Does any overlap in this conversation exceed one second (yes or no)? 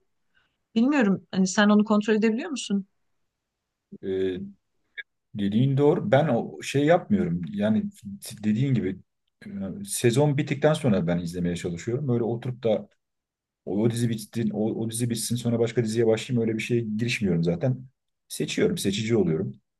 no